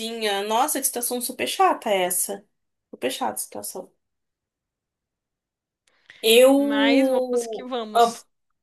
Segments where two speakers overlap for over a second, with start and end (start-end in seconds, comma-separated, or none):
6.5-8.1